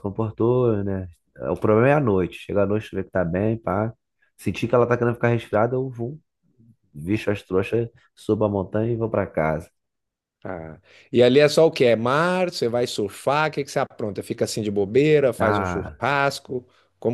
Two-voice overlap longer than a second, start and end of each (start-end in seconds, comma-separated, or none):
none